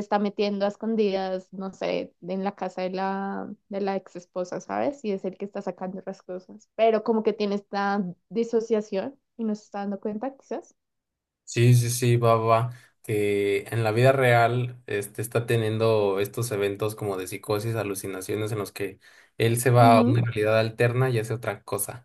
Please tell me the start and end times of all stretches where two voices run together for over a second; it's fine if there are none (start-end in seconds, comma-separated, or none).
none